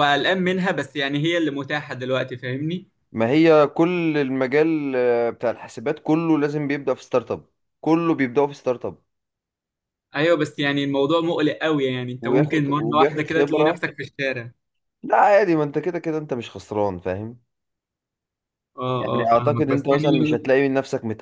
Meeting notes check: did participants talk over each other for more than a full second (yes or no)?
yes